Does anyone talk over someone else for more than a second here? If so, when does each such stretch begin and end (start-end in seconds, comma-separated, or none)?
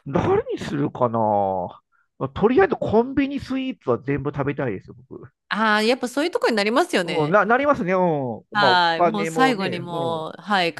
8.6-10.2